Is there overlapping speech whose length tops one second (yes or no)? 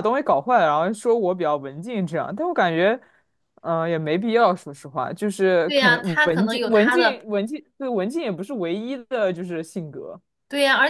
yes